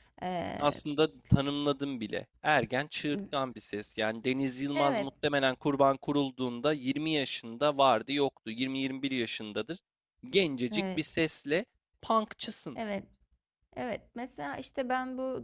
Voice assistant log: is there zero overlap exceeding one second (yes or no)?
yes